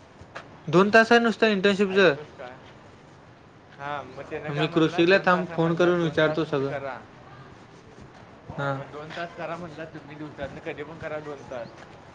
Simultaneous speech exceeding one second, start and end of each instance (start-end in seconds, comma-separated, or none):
4.6-6.7